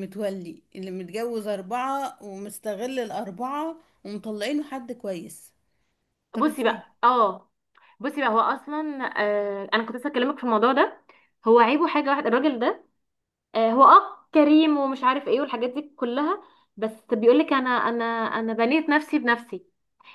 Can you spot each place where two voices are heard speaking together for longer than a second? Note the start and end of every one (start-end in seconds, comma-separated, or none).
none